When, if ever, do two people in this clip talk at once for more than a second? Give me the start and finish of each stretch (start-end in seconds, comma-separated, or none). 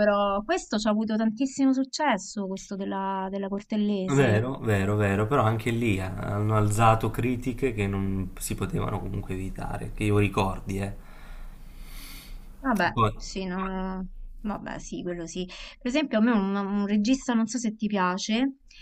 none